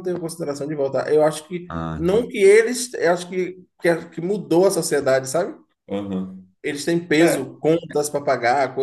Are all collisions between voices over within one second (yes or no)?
yes